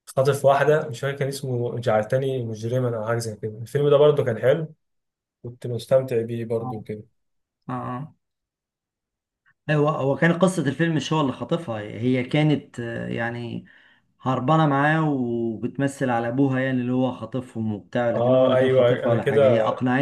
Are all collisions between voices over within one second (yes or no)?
no